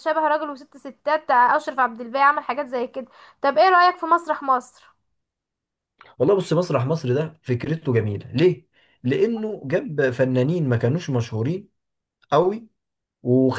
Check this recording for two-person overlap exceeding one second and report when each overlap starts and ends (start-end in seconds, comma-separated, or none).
none